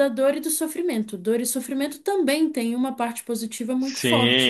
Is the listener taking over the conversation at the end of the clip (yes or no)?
yes